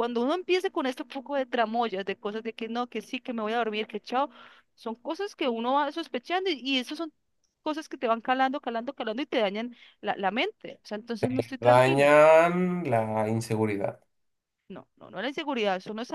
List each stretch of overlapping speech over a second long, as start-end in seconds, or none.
none